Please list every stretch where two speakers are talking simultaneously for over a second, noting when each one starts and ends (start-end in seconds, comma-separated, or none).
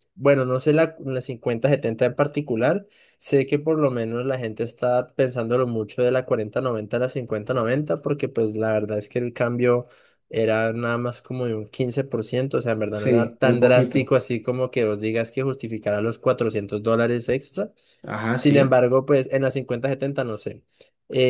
12.9-14.1